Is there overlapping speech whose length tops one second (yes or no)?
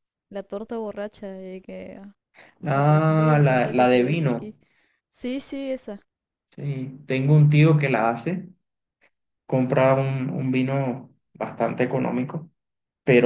yes